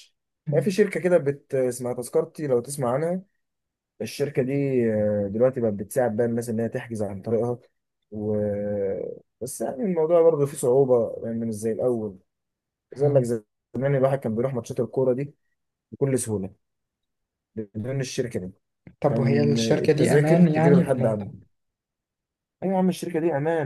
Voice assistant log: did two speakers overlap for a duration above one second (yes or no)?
yes